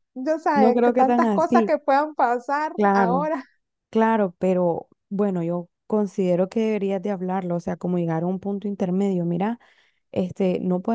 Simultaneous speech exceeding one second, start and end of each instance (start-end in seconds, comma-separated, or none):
0.5-1.7